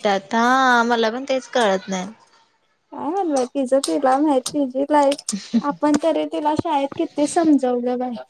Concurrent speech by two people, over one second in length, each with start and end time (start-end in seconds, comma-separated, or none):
none